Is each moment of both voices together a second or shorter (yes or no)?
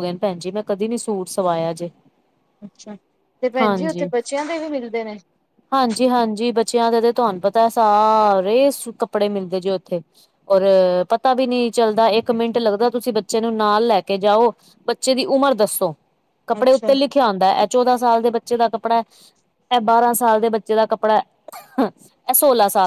yes